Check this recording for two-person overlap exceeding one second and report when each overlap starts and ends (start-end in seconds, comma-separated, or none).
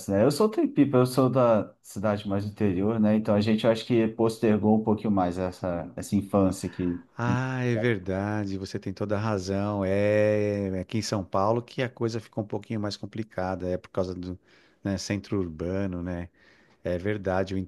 none